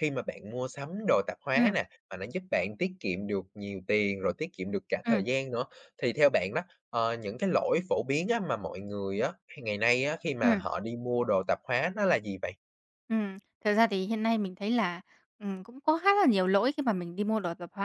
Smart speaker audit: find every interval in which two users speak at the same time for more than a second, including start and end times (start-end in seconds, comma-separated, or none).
none